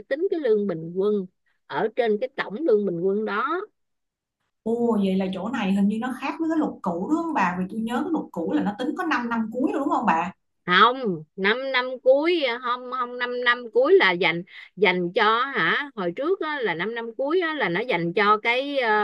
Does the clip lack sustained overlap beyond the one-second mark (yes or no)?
yes